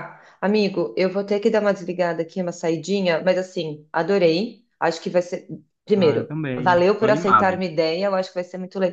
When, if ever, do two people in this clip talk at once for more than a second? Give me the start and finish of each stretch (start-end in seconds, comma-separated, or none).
6.0-7.6